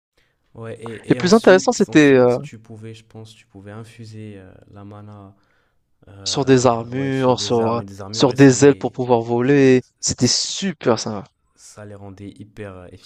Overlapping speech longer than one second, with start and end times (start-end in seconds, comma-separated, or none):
1.1-2.4, 6.3-8.9